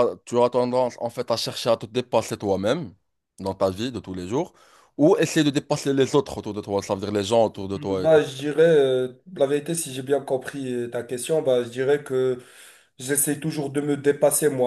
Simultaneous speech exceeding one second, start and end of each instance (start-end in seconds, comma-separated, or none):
none